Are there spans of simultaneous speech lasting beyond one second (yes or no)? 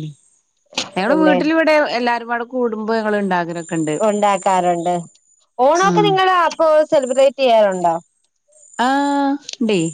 no